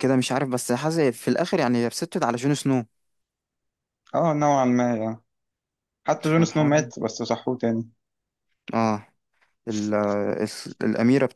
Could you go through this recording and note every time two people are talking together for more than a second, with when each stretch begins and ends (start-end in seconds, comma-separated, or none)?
none